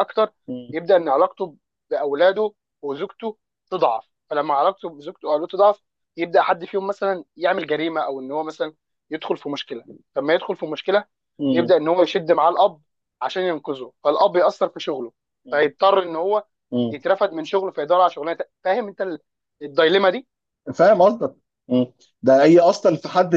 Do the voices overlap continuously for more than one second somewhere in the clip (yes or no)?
no